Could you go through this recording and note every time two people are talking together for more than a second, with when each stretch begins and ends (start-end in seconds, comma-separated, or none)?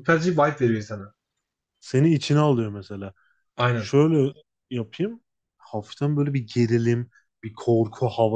none